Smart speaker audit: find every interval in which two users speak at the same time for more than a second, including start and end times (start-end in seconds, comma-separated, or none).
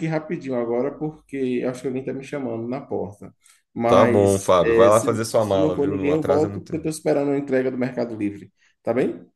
3.9-6.9